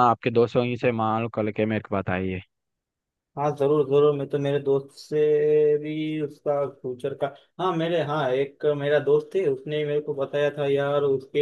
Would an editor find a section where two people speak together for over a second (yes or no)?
no